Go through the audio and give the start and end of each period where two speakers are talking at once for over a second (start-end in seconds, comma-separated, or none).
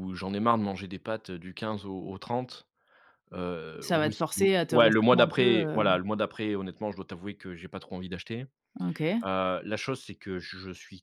3.8-5.8